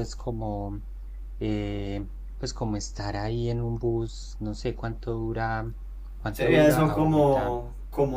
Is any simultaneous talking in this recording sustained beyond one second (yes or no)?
yes